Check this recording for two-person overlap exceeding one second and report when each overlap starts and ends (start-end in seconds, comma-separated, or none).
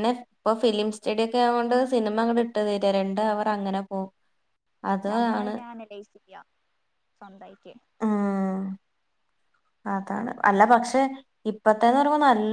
none